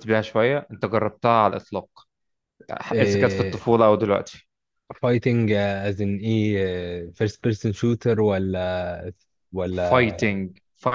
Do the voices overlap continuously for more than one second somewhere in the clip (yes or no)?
no